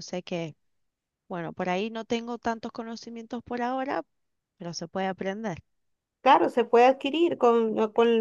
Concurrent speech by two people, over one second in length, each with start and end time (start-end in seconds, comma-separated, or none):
none